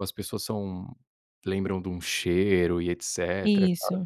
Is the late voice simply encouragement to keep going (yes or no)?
yes